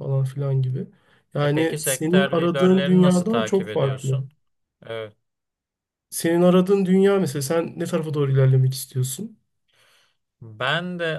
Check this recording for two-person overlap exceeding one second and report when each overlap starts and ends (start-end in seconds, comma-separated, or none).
1.4-4.2